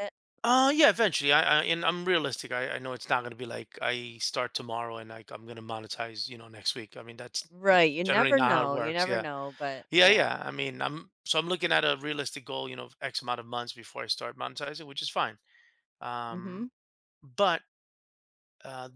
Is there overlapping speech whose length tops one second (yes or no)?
yes